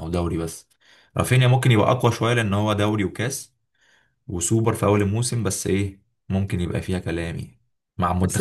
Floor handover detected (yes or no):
yes